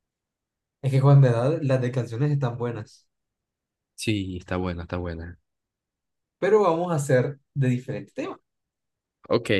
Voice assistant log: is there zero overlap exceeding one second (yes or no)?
yes